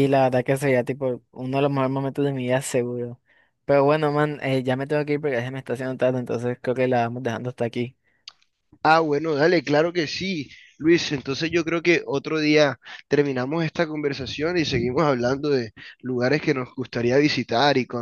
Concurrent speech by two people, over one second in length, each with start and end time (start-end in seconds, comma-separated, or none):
none